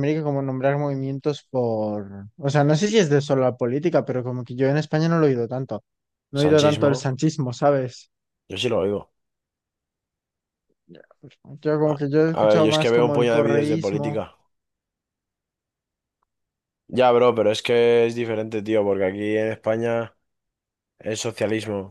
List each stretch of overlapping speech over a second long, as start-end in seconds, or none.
11.8-14.2